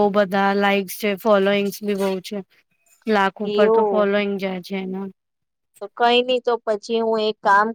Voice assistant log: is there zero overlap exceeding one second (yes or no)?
yes